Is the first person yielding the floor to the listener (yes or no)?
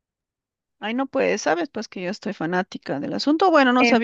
no